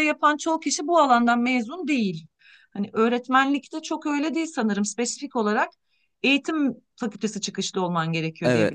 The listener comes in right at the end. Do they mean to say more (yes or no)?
yes